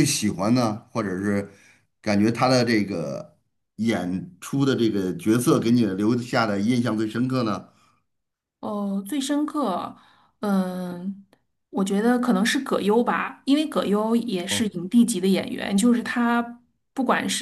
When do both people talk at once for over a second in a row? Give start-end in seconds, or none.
none